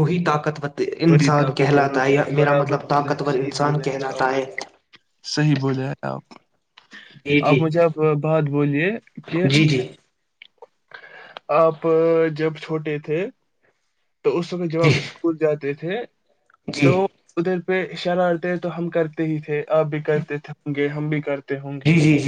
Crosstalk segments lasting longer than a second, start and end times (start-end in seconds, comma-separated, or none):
1.1-4.2